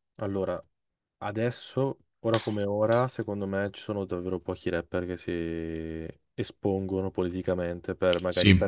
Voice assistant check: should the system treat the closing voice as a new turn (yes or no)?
no